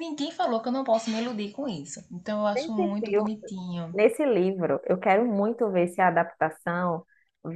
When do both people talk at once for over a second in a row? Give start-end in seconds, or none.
none